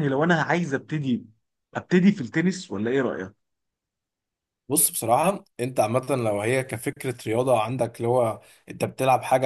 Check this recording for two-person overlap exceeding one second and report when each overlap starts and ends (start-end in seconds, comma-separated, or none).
none